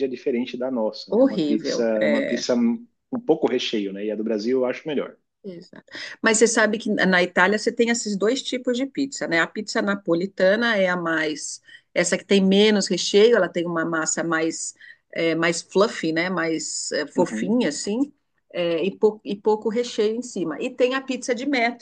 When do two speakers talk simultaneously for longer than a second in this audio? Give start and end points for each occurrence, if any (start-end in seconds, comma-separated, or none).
1.1-2.5